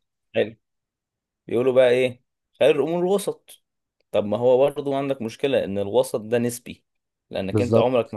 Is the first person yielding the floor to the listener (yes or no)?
no